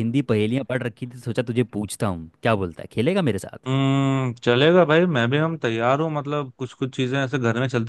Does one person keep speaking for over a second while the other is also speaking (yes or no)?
no